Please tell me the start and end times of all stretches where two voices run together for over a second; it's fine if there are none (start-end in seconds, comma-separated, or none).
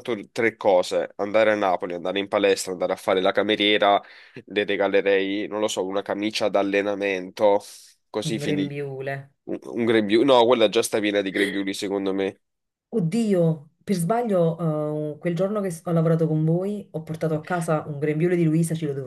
none